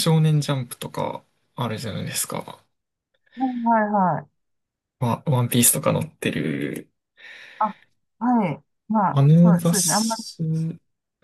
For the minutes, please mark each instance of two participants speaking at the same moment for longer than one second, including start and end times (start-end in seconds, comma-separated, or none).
9.1-10.4